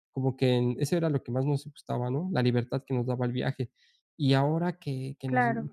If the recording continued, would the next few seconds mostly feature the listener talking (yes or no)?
no